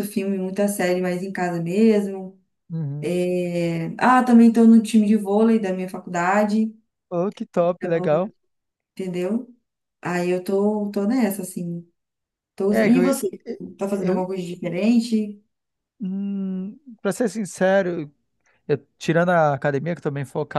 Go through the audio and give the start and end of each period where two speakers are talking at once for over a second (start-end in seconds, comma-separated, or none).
none